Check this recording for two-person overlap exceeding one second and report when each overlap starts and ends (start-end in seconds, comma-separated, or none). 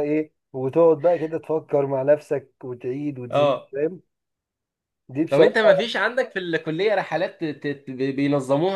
none